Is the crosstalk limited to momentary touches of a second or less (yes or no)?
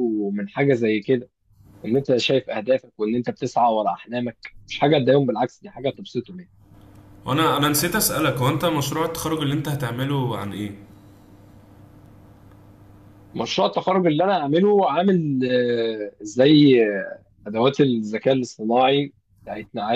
yes